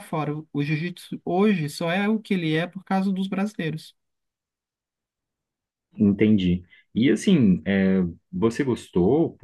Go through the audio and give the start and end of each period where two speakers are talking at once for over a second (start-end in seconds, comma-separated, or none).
none